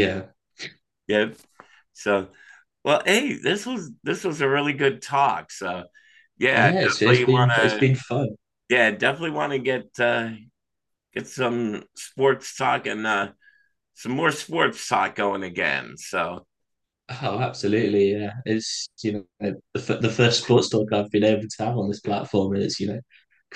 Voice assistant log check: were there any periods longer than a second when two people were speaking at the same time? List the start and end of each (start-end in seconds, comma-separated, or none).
6.5-7.8